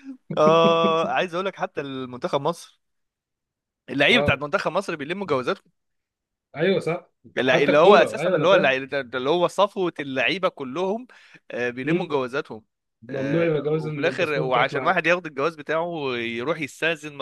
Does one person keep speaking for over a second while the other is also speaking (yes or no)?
yes